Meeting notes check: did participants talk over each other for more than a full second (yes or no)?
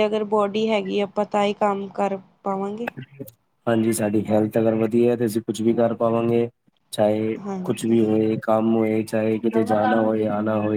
no